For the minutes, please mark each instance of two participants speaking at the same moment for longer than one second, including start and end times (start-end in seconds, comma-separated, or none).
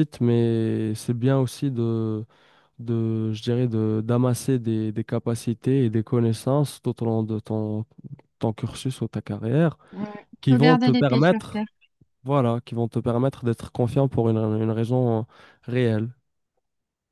10.4-11.7